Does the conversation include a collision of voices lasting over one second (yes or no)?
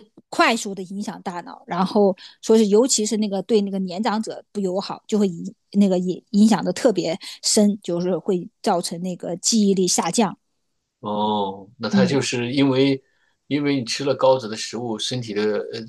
no